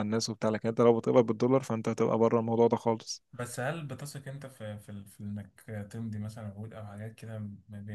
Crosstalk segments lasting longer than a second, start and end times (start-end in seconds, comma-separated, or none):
none